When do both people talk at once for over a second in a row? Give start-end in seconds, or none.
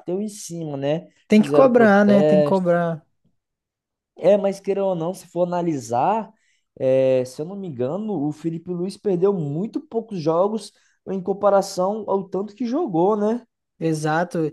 1.3-2.7